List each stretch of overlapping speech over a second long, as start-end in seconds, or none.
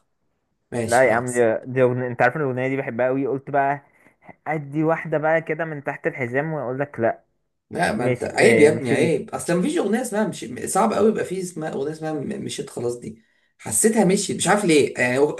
8.0-9.2